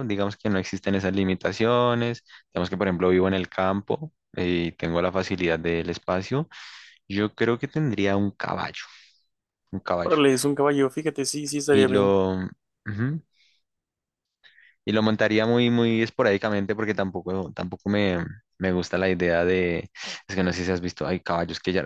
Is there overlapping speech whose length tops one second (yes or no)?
no